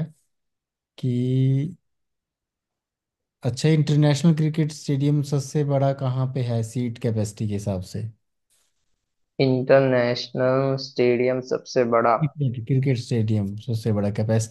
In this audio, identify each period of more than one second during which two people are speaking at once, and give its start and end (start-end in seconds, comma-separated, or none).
none